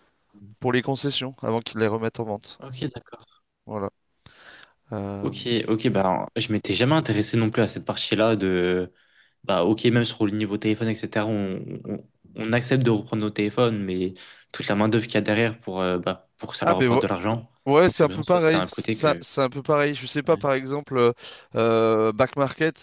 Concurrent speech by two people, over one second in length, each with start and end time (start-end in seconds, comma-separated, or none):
17.9-19.2